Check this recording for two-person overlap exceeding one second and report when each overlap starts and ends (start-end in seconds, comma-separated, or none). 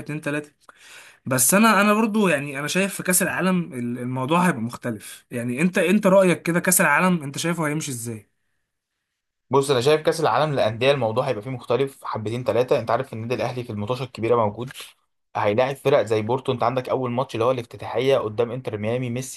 none